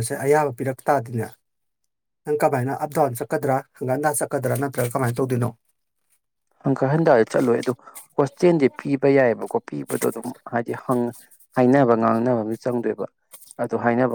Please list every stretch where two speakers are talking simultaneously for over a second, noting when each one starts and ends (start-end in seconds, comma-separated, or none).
none